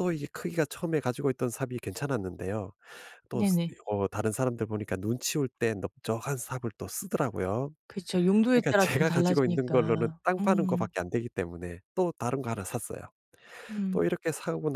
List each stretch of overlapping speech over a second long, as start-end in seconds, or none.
8.5-10.9